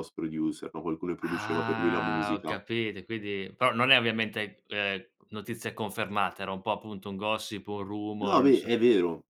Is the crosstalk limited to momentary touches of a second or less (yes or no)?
no